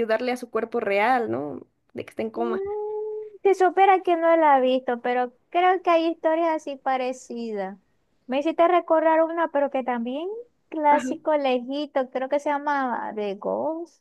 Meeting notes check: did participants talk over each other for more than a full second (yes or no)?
no